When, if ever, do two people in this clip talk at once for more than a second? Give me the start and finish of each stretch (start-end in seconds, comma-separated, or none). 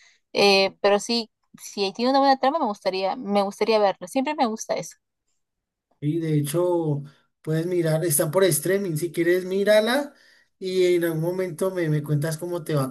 none